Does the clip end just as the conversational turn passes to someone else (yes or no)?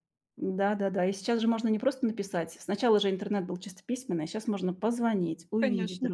yes